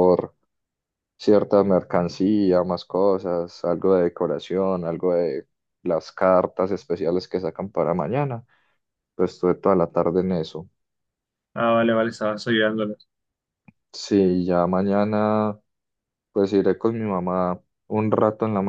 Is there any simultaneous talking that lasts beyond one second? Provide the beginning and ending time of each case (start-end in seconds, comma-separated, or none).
none